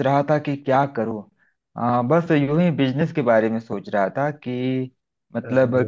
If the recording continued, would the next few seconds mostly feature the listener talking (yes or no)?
no